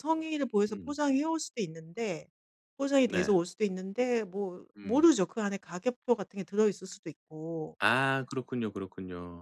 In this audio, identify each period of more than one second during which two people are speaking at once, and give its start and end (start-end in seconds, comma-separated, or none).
none